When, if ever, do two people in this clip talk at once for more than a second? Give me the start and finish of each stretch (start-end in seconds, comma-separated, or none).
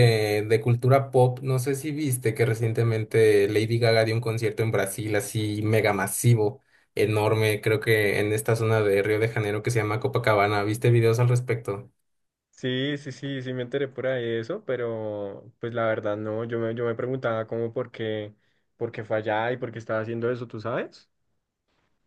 none